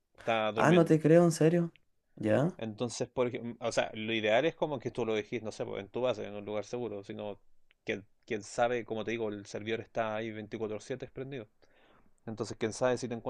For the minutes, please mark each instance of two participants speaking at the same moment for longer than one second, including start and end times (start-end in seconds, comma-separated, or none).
none